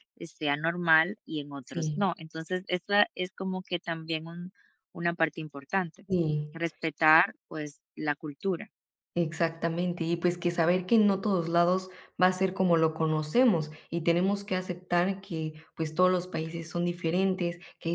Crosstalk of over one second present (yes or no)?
no